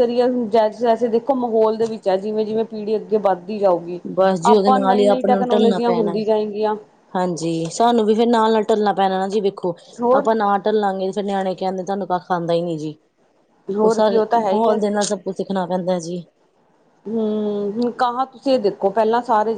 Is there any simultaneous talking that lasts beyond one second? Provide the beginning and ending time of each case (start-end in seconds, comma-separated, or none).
4.5-6.2